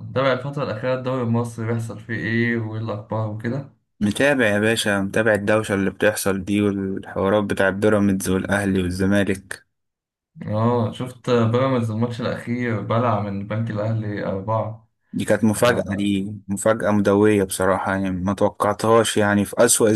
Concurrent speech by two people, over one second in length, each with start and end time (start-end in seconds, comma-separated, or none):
none